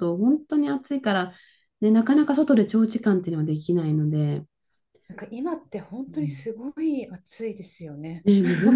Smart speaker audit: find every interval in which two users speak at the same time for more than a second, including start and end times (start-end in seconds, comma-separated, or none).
none